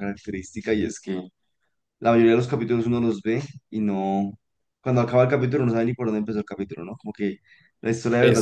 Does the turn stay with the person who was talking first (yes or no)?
yes